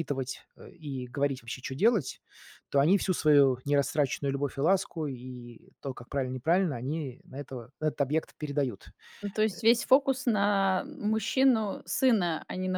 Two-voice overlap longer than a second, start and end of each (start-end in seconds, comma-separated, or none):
none